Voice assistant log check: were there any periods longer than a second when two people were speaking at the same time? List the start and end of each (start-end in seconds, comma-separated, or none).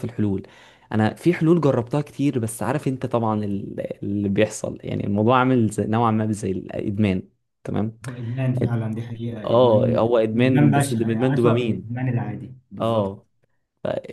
9.4-11.9